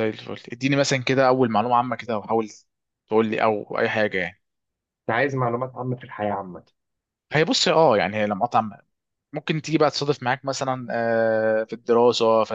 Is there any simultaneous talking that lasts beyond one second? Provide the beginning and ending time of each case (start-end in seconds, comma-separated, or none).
none